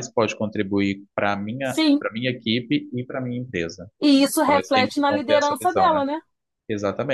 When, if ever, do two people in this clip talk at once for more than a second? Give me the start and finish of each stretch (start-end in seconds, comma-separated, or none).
4.4-6.0